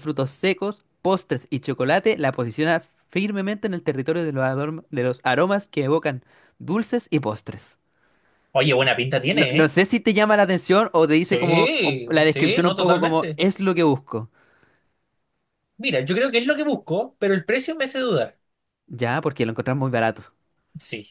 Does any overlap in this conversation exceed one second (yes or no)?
yes